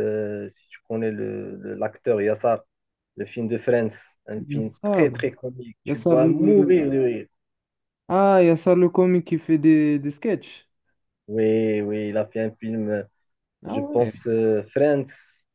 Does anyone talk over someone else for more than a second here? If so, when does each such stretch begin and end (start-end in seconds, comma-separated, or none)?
none